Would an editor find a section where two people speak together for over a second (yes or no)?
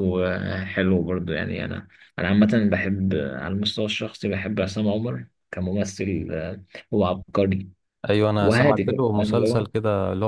yes